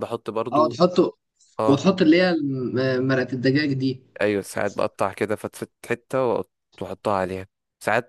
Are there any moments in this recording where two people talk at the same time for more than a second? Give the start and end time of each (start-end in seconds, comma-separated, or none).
none